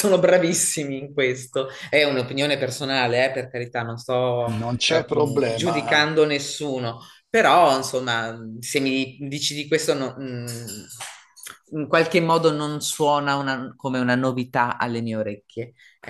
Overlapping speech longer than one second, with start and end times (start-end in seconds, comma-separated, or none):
4.9-6.1